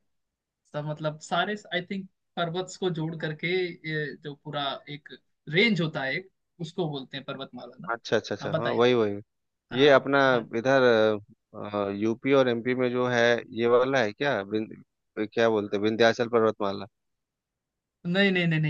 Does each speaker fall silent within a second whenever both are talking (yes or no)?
yes